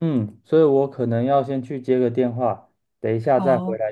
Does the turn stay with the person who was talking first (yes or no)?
yes